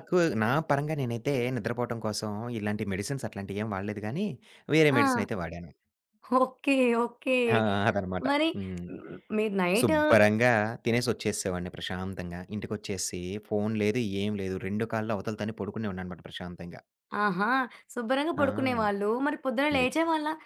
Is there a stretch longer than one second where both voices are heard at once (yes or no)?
no